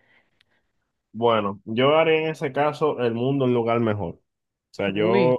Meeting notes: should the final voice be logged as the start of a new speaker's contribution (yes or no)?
no